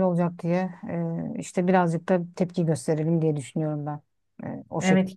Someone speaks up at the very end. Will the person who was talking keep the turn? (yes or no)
no